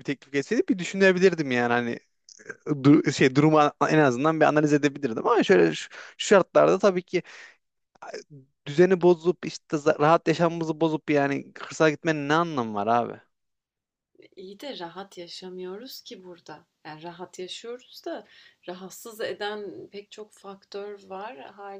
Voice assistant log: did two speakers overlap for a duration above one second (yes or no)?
no